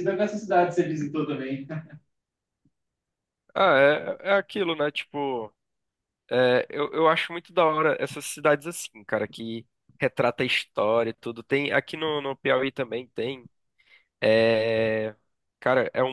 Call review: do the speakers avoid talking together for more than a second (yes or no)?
yes